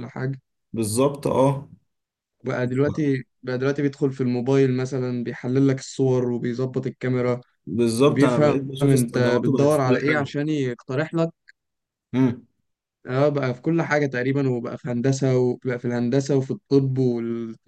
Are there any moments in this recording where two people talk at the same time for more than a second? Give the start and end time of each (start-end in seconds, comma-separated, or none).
8.1-10.3